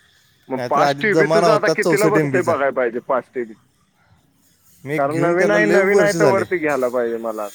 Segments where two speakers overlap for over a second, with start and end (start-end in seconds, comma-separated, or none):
0.6-2.5, 5.0-6.4